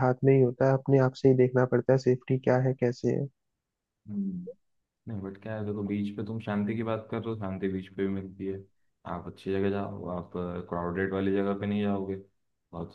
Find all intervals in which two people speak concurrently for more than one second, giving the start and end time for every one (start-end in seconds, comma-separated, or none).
none